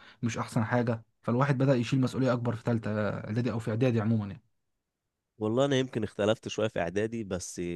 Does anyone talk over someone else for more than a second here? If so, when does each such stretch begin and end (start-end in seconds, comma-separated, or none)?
none